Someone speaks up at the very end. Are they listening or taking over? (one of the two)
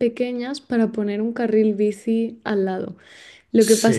listening